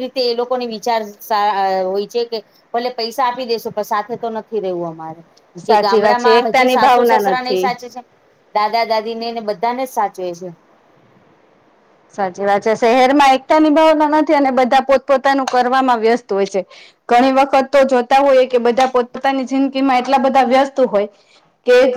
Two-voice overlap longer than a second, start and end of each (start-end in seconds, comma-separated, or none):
5.7-7.7